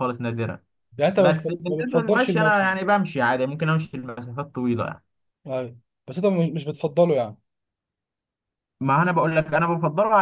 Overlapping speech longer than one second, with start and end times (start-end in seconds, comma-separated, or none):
1.2-2.7